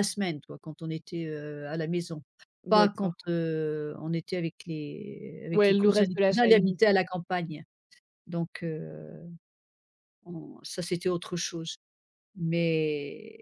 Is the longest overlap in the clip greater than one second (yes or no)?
yes